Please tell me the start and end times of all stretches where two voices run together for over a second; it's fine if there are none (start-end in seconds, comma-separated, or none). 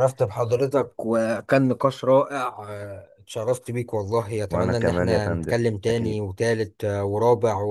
4.5-6.2